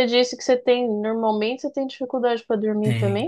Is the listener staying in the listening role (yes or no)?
no